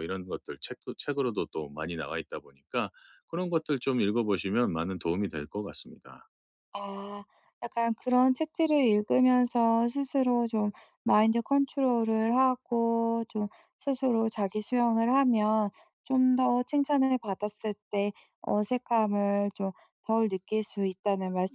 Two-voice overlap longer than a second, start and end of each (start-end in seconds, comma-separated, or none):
none